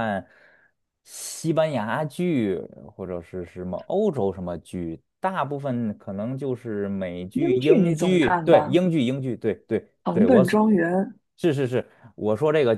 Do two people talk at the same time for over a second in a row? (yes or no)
yes